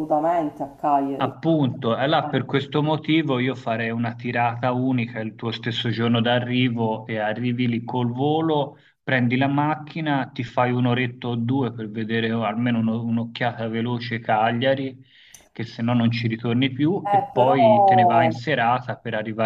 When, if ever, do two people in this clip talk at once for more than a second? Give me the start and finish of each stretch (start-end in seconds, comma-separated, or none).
17.0-18.4